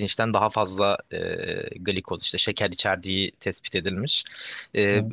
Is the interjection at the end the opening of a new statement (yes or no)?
no